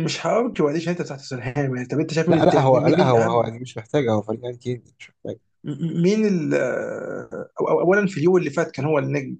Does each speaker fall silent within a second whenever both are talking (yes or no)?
no